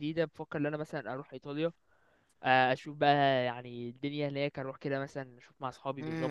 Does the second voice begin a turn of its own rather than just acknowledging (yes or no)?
yes